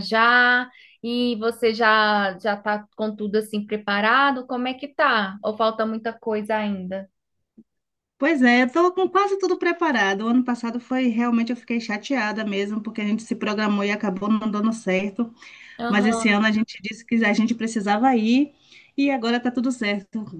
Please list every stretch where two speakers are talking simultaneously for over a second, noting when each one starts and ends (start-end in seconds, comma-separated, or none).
none